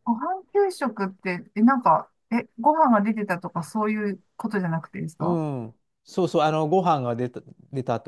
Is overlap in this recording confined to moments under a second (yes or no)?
yes